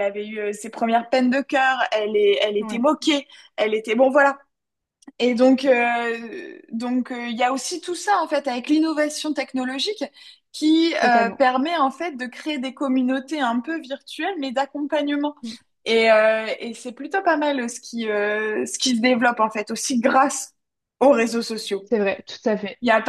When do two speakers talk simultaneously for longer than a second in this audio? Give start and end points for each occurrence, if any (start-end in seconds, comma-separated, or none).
none